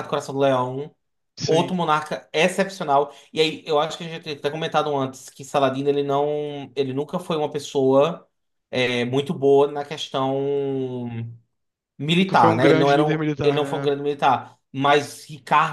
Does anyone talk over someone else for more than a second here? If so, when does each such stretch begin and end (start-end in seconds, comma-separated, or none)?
12.2-13.9